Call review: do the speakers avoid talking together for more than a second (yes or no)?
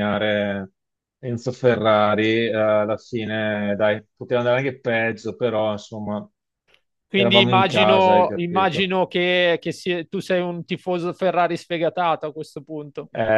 no